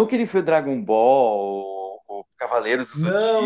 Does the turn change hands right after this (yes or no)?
yes